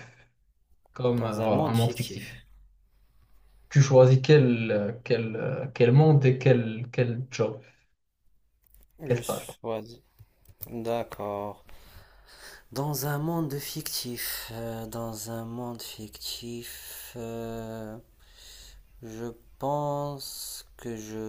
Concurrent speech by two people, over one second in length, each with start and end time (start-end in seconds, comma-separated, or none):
1.2-2.4